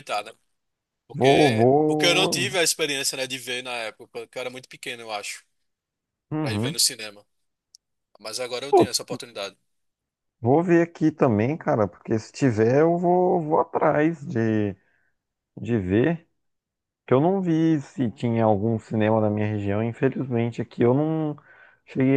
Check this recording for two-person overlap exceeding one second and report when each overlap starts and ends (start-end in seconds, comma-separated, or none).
1.1-2.5